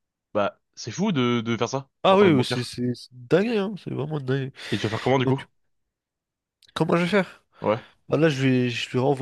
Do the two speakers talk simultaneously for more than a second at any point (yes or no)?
no